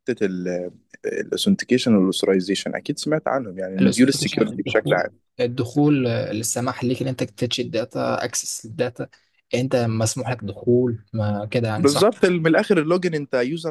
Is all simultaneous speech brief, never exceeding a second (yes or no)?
no